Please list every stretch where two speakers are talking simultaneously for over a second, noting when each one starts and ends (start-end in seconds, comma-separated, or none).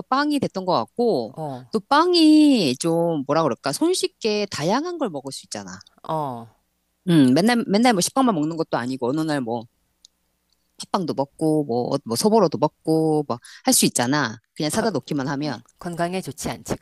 none